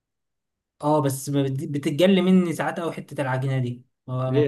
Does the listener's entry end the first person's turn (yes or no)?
yes